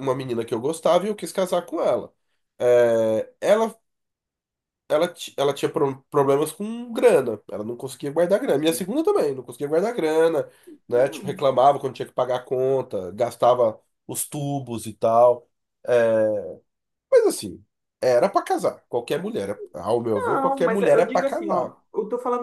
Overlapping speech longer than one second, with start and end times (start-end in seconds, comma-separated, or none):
20.1-21.7